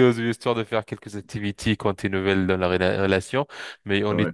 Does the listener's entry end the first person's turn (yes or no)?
no